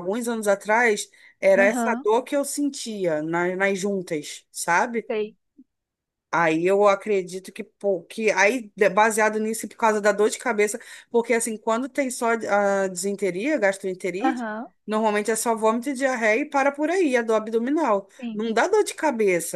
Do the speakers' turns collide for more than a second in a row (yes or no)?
no